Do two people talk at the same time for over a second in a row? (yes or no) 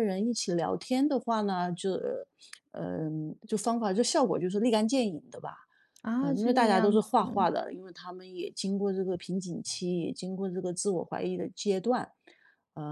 yes